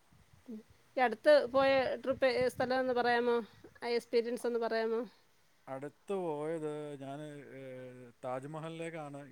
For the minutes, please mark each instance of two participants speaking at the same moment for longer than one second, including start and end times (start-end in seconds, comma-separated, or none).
none